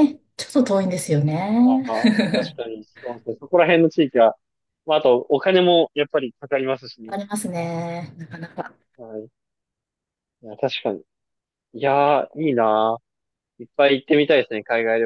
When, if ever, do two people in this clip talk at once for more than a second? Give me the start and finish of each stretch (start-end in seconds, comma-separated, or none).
none